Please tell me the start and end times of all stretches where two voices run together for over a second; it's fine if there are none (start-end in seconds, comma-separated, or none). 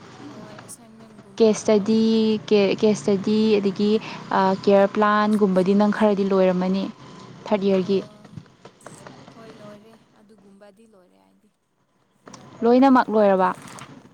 5.2-6.6